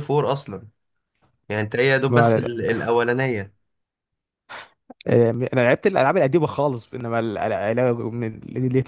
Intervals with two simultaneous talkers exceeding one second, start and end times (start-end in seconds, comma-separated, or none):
none